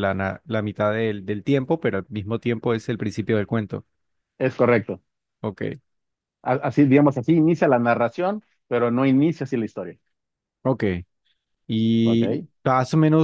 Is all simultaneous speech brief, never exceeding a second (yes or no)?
yes